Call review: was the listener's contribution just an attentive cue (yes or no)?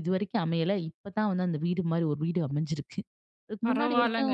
no